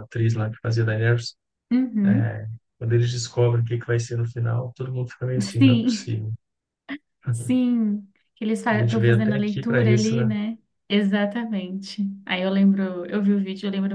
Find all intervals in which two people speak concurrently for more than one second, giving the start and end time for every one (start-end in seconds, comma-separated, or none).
8.7-10.3